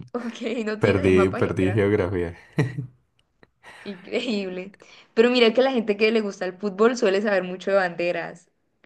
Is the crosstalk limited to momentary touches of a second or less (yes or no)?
no